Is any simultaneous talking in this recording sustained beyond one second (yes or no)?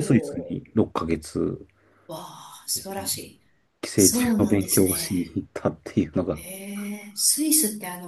yes